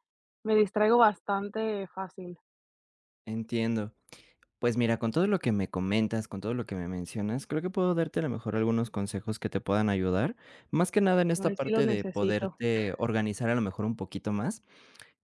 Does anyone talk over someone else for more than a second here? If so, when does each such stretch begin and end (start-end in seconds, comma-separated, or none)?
11.3-12.6